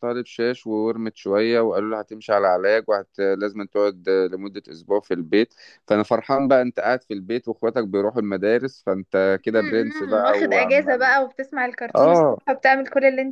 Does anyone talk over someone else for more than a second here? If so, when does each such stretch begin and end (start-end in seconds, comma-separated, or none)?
9.5-11.2